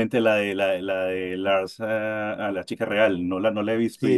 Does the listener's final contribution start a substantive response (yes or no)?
yes